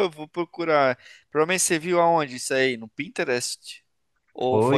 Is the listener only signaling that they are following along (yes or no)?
no